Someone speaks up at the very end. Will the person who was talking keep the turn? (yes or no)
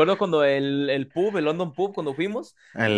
no